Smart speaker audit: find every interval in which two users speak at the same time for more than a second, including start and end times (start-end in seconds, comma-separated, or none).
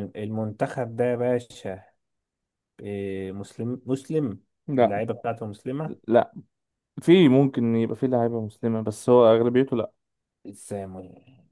none